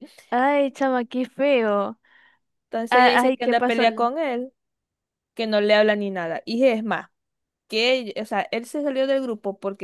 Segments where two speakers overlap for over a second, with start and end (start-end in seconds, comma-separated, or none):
2.9-4.1